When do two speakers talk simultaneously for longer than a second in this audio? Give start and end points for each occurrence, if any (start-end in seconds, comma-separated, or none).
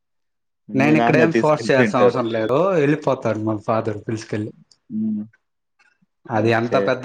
0.8-2.2